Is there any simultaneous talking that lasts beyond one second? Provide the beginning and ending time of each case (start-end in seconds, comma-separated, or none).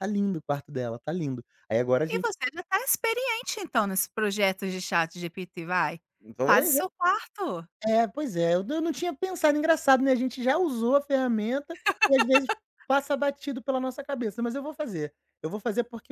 none